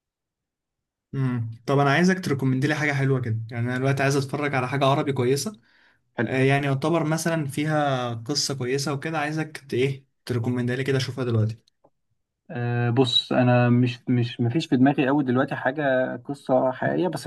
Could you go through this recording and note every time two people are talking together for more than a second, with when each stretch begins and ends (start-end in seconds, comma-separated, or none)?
none